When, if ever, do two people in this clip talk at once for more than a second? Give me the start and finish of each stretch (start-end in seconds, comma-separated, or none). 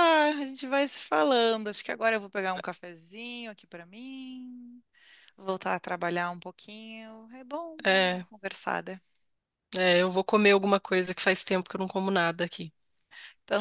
none